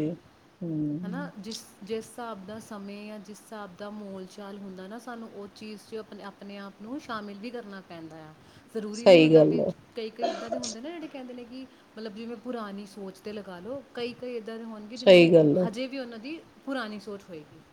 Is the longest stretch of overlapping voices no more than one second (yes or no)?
yes